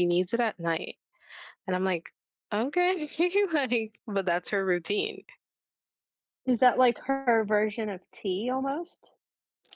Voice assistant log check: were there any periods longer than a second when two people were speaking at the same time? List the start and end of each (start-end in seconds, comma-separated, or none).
none